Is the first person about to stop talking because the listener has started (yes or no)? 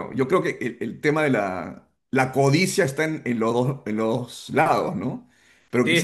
no